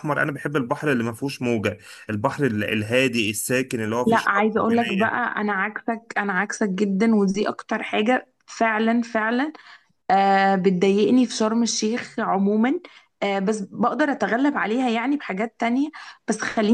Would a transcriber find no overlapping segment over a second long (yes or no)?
no